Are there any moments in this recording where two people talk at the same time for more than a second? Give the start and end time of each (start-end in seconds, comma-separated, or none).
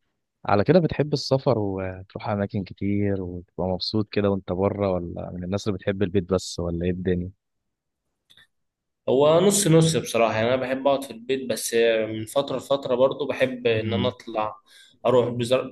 none